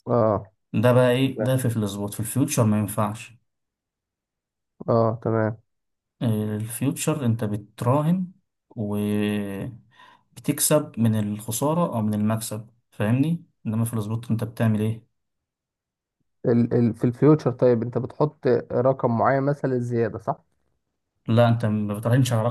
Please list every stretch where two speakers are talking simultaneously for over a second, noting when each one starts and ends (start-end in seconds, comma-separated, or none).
none